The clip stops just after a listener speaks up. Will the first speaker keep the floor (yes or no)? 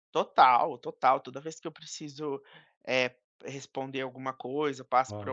yes